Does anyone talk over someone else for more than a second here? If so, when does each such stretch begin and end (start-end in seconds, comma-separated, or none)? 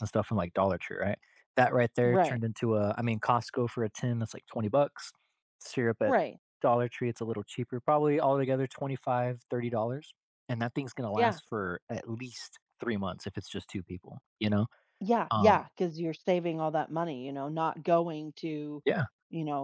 none